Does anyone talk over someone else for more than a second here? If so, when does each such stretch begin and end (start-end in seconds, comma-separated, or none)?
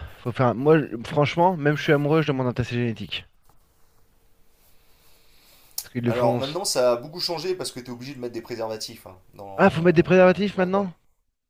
9.6-10.9